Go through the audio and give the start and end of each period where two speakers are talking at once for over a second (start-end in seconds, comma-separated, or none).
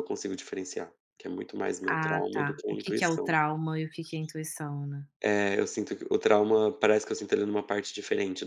1.9-3.3